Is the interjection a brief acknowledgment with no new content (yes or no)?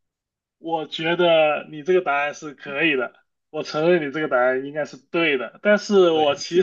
yes